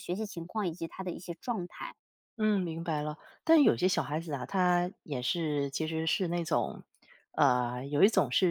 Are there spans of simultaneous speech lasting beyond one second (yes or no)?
no